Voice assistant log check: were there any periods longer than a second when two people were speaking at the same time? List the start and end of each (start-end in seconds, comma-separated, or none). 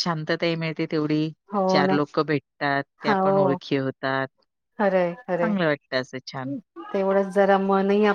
none